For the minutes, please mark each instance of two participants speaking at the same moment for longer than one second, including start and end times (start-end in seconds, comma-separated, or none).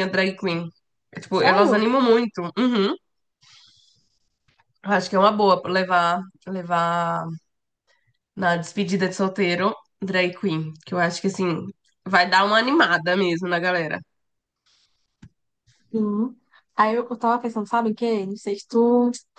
none